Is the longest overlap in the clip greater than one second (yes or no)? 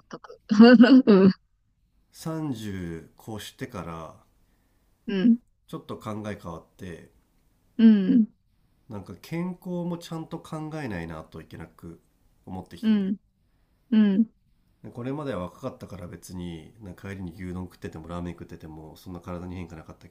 no